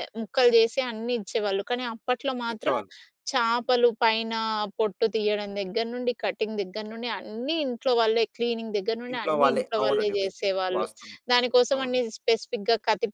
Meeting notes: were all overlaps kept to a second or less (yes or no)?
no